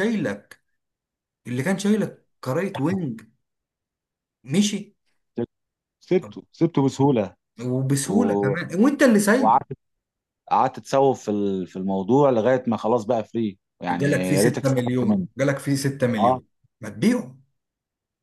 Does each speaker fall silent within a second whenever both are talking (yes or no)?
no